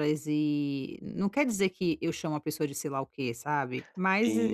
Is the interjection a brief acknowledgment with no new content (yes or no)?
no